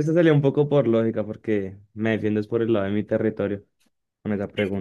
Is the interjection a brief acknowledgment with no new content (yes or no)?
no